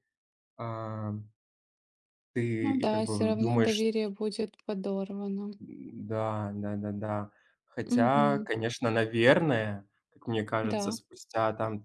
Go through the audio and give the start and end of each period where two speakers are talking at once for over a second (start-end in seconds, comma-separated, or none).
2.6-3.8